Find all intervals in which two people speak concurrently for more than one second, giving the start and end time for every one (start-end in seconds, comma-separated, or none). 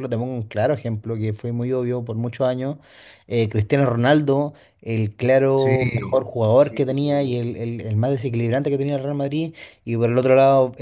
5.6-7.4